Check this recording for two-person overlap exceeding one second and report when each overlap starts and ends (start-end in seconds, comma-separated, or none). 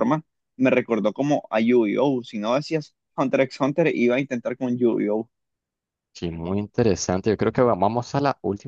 none